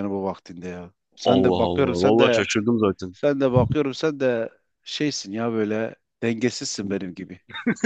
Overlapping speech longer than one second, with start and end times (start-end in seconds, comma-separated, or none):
1.2-2.4